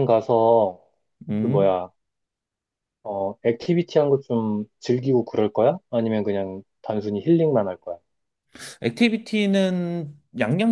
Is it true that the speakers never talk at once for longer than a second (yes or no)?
yes